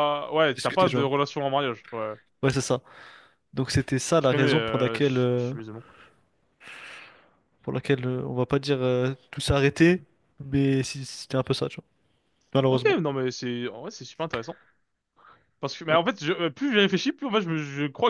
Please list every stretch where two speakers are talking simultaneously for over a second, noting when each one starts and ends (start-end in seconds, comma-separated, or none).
4.2-5.5